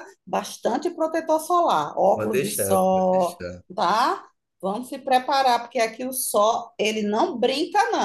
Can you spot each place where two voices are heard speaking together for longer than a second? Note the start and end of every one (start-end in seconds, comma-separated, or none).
2.1-3.4